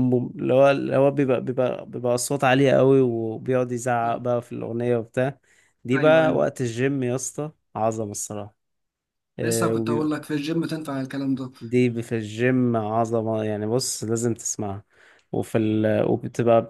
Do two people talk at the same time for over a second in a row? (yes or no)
no